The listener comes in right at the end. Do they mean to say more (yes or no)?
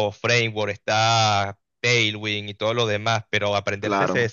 no